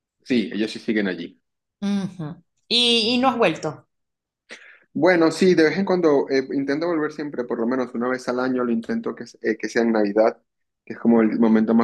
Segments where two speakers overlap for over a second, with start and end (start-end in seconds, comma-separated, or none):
none